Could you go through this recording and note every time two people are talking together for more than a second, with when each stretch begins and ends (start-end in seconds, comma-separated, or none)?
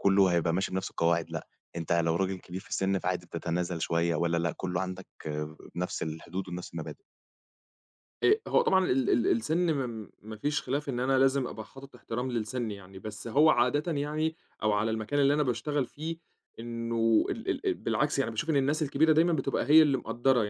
none